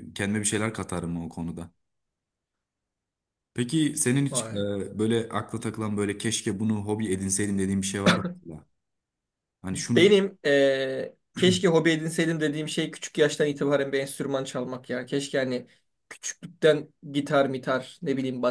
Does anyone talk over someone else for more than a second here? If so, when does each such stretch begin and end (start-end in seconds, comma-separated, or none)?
none